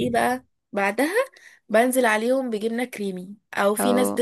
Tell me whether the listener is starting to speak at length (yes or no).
no